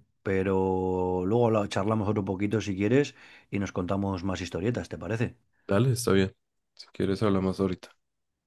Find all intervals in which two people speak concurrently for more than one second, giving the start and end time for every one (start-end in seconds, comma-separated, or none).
none